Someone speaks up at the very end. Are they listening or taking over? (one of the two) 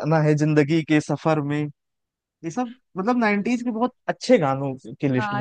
taking over